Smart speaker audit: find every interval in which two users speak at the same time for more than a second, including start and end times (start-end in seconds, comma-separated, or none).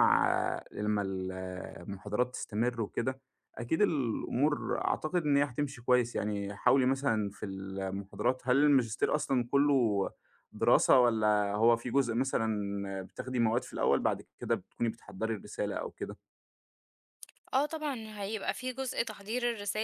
none